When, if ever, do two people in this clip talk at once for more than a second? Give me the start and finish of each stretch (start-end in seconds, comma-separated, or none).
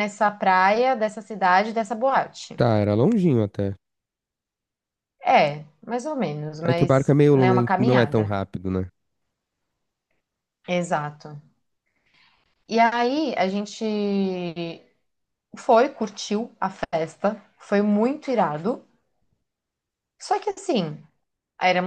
6.7-8.3